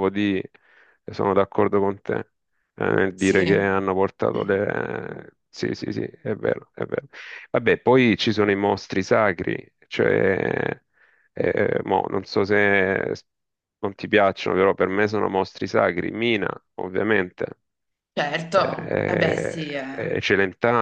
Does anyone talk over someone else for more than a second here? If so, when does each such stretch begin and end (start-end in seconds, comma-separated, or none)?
18.5-20.1